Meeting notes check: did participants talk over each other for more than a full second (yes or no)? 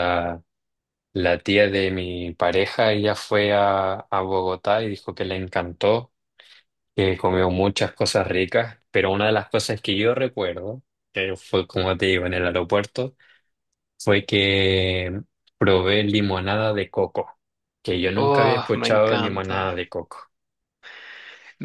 yes